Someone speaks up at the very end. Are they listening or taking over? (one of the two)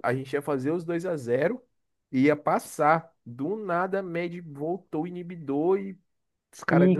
taking over